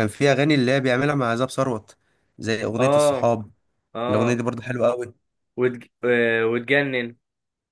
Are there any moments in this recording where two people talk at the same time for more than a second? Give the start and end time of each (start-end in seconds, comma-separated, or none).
none